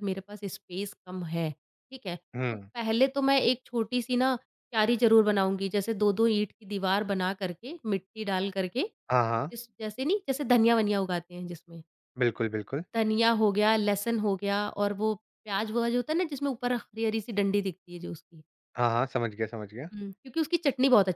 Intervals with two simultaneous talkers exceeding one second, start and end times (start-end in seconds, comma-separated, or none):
none